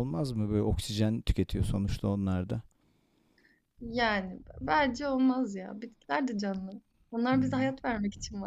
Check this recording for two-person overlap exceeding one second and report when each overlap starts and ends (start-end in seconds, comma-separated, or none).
none